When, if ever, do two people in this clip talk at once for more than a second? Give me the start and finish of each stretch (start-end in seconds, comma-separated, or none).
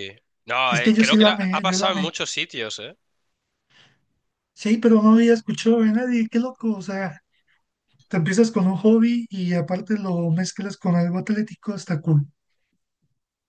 0.7-2.1